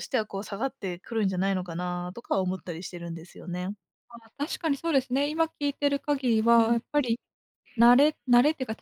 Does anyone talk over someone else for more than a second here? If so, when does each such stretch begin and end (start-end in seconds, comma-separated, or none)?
none